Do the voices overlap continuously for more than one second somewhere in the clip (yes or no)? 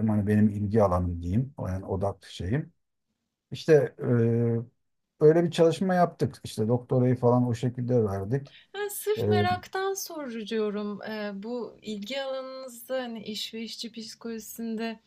no